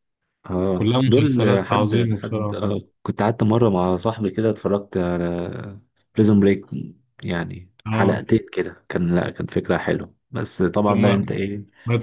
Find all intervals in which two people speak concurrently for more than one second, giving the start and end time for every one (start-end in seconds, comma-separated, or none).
0.7-2.6